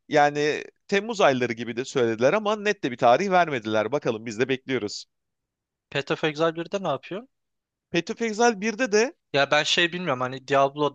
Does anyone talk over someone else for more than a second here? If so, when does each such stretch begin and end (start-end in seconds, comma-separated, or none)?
none